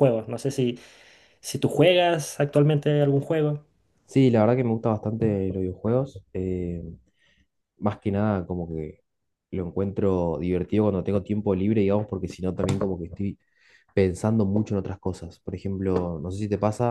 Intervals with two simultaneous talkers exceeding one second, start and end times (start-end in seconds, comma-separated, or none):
none